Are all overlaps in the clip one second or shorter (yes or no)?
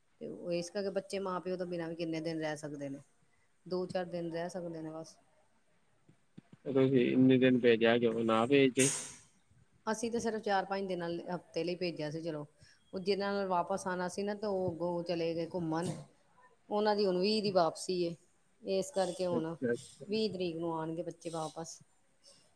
yes